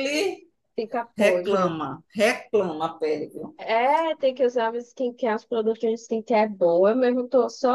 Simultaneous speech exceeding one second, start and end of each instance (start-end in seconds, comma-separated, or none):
none